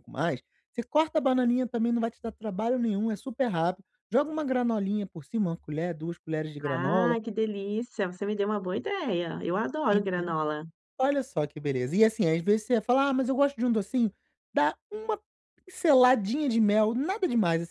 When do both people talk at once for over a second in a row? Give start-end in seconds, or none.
none